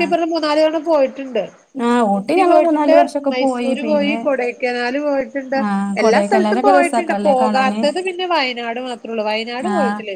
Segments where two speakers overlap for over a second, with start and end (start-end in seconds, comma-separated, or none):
6.0-7.8